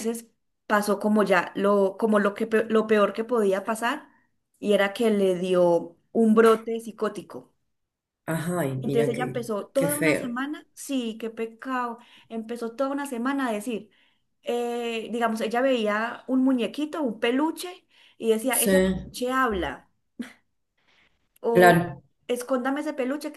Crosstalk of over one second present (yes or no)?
yes